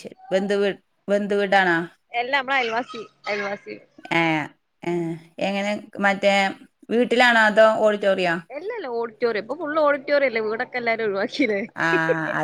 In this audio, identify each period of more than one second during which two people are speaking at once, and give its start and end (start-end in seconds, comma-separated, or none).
none